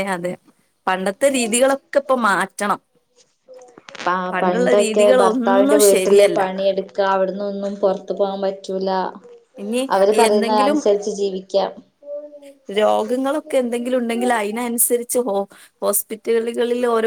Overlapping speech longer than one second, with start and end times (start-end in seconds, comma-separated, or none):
4.3-6.4